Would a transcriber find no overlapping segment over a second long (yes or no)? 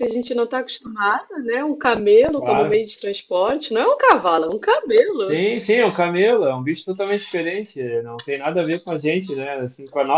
yes